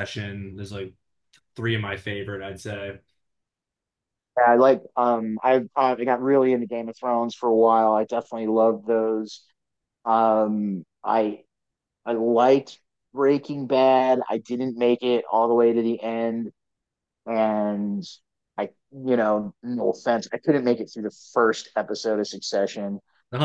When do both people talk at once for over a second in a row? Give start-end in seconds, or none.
none